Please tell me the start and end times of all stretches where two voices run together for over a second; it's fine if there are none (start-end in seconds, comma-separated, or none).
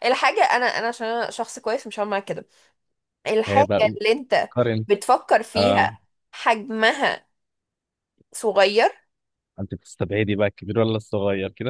none